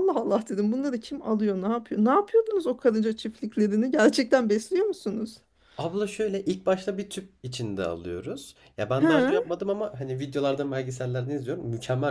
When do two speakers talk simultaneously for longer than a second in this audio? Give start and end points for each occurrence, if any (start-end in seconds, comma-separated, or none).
none